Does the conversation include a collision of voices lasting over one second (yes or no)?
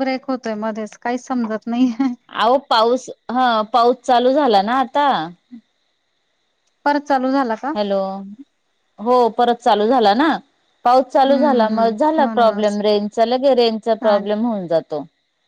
yes